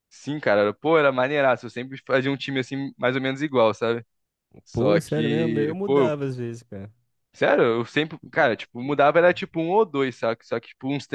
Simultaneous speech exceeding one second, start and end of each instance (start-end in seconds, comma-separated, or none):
4.7-6.1